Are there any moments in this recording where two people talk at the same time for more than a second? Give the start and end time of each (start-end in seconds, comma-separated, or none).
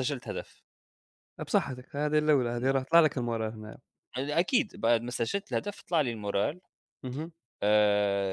none